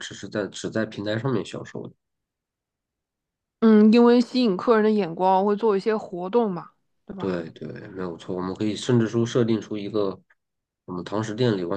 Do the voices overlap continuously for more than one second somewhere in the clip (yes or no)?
no